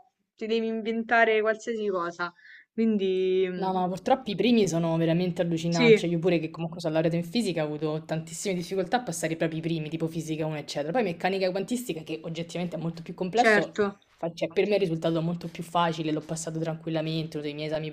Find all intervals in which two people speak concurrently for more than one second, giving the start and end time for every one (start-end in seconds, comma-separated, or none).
none